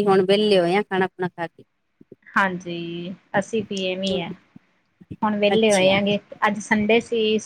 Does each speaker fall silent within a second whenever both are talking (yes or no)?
yes